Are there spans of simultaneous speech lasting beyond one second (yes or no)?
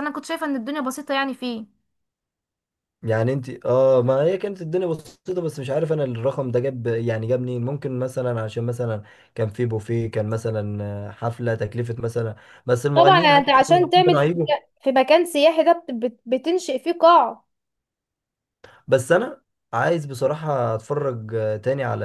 yes